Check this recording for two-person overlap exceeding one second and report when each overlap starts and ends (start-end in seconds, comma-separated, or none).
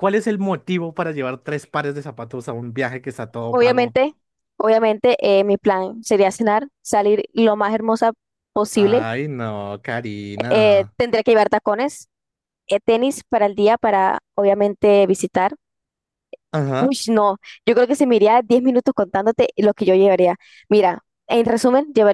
none